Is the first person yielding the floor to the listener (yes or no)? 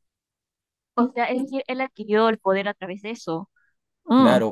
yes